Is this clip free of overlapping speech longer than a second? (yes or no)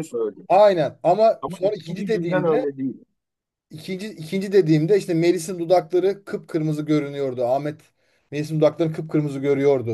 no